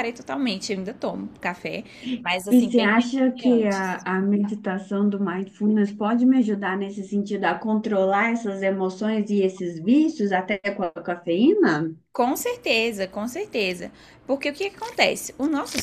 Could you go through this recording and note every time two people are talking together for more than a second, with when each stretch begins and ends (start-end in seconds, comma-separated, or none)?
2.5-4.0